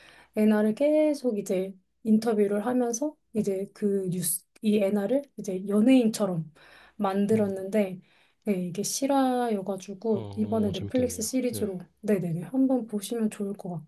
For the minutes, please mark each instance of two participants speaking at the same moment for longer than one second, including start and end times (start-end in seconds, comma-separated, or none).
10.1-11.7